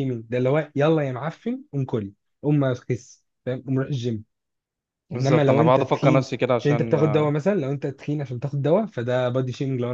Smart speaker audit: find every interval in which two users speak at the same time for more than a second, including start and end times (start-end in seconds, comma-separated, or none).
5.1-7.3